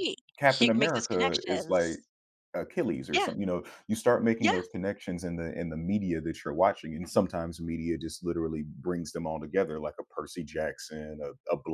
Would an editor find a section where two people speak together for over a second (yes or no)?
yes